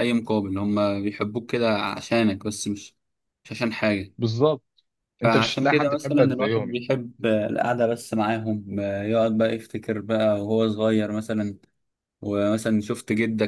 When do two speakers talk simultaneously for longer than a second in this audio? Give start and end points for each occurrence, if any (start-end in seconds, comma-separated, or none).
5.2-6.8